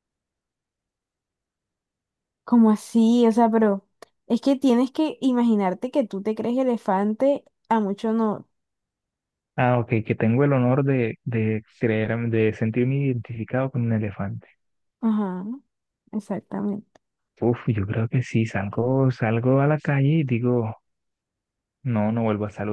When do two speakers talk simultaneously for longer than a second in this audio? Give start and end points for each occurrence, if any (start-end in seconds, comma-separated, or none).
none